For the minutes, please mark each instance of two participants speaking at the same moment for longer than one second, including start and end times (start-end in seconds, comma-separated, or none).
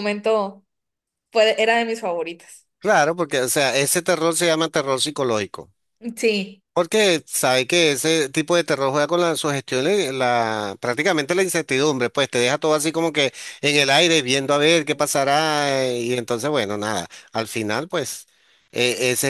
none